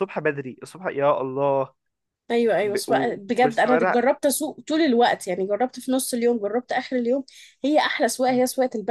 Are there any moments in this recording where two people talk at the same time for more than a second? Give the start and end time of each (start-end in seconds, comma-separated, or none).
2.6-4.0